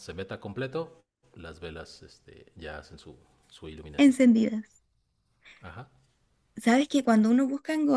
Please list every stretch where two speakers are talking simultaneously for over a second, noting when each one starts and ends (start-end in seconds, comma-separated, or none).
none